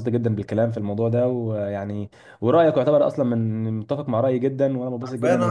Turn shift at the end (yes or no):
yes